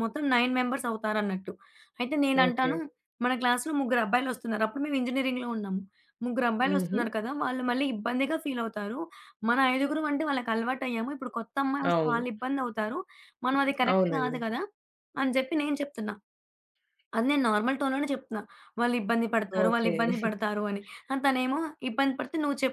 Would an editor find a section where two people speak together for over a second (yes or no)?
no